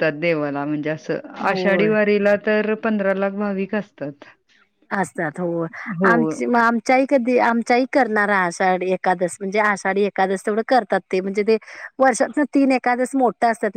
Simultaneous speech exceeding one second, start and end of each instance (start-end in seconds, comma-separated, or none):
none